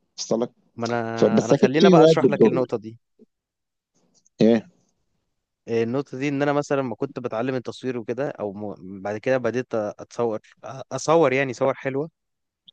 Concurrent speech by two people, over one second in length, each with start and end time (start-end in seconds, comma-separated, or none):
1.1-2.6